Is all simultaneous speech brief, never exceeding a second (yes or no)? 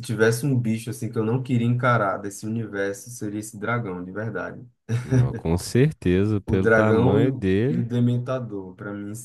no